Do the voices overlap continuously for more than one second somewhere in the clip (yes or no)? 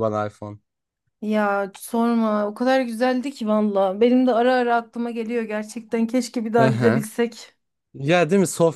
no